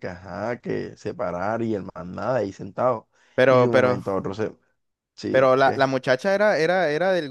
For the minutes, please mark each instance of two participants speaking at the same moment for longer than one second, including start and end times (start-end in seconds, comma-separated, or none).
none